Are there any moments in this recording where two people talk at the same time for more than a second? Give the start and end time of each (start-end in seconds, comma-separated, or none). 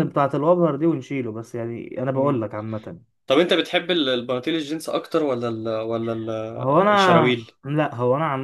none